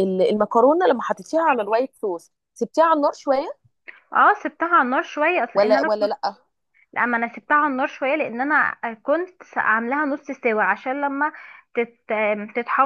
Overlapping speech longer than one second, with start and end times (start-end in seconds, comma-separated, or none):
none